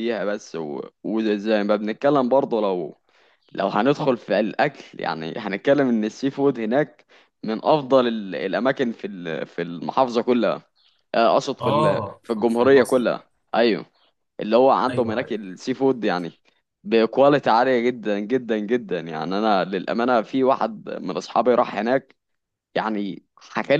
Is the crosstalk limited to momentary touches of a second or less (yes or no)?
no